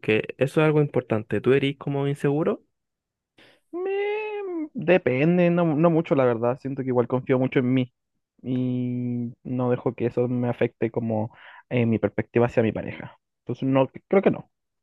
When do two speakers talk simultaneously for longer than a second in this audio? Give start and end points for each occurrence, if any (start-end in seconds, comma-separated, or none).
none